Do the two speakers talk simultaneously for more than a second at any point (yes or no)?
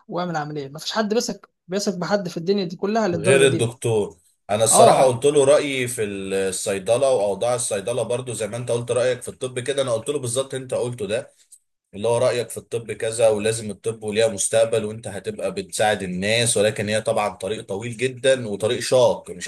no